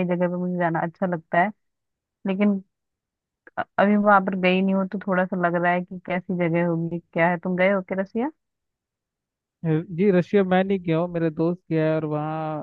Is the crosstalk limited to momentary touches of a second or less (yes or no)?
yes